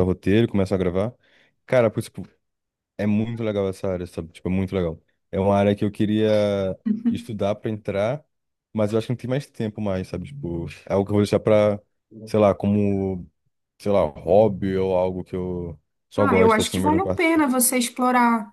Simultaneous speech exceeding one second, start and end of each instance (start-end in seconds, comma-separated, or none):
16.1-17.5